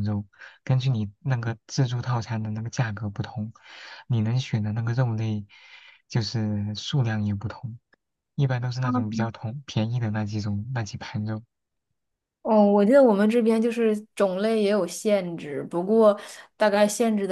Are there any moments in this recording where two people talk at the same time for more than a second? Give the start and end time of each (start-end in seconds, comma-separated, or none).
none